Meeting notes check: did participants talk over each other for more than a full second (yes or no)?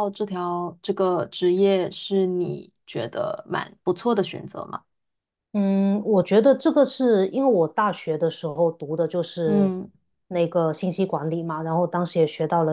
no